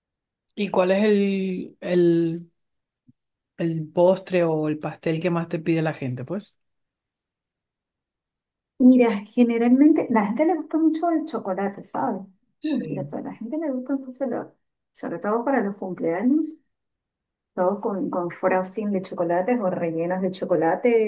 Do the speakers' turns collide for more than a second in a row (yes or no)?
no